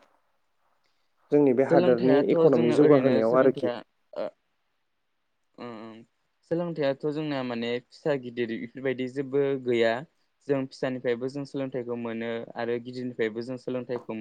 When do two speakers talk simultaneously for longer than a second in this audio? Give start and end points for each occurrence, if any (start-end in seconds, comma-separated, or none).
1.7-3.7